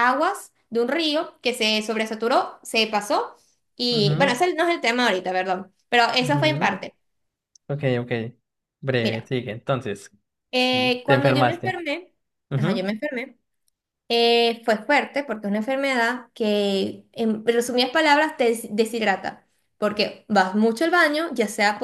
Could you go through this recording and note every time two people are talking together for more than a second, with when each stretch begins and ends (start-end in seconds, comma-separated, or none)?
10.6-11.8